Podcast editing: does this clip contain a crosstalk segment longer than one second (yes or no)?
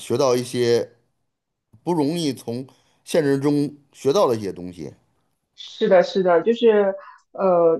no